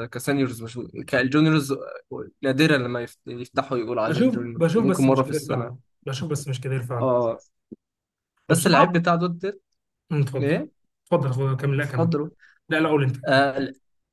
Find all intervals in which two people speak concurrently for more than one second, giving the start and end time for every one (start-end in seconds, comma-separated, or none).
4.0-5.7